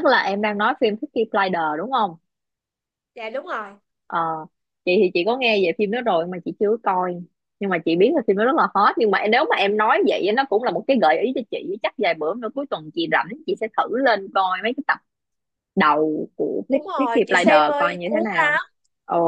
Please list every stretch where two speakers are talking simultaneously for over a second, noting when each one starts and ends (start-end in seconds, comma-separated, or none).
16.7-18.6